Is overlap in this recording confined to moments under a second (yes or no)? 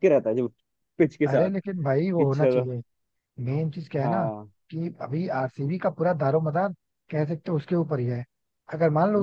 yes